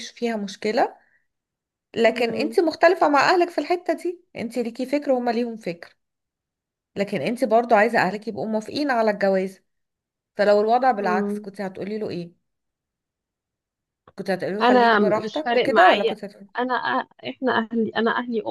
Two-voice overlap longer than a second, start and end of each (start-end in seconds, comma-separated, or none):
14.6-16.1